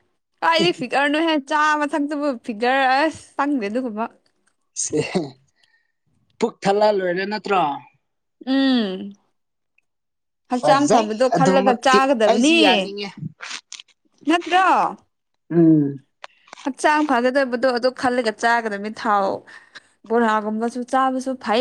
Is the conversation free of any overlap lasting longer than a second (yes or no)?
no